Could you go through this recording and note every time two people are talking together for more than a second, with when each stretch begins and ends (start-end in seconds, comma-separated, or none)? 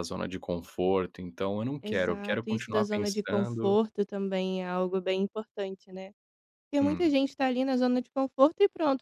1.8-3.8